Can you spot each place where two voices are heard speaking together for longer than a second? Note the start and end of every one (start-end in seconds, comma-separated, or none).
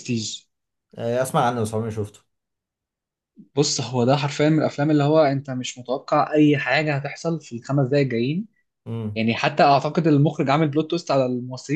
none